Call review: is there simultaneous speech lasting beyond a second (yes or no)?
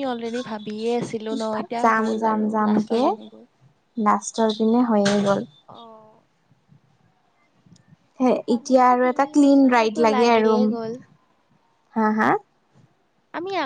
yes